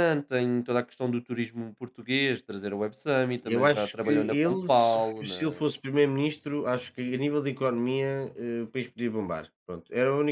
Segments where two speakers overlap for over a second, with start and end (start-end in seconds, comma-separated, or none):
3.4-5.6